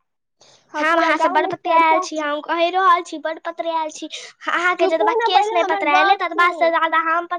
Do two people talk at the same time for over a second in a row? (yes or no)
yes